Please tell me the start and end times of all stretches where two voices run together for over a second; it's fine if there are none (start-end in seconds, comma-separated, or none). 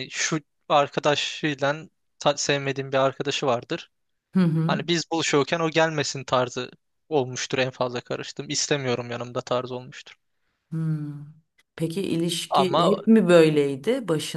none